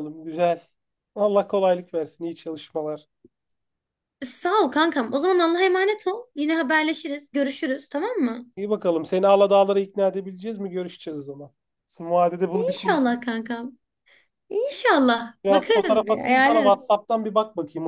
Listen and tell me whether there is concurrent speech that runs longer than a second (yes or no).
yes